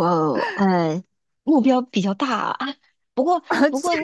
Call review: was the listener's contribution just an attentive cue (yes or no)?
yes